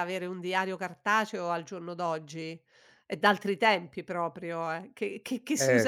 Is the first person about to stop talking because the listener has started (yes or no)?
no